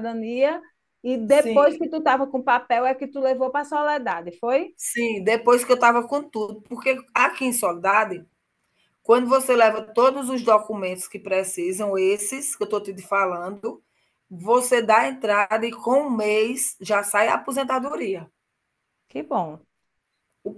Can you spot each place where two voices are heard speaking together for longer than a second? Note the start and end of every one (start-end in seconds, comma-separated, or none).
none